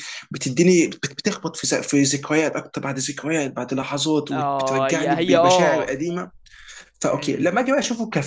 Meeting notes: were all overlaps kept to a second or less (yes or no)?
no